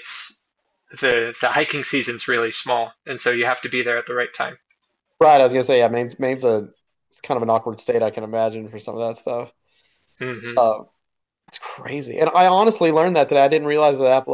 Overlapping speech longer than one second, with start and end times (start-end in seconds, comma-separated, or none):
none